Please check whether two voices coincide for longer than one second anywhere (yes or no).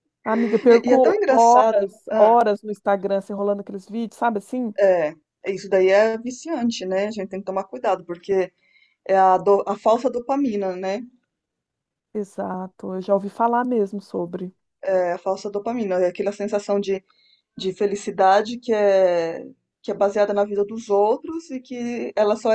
yes